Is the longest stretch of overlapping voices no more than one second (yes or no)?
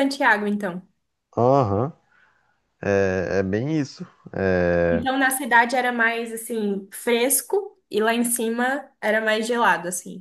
yes